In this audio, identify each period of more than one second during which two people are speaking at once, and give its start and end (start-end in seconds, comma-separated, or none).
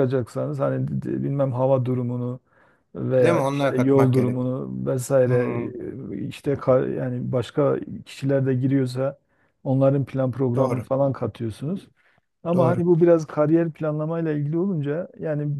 3.2-4.4